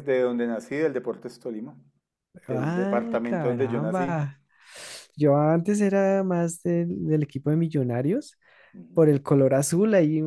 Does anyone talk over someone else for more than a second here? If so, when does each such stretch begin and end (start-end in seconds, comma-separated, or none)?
2.5-4.2